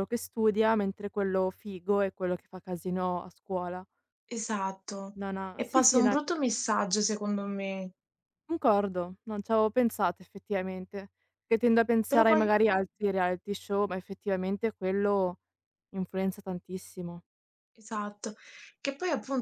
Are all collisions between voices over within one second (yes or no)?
yes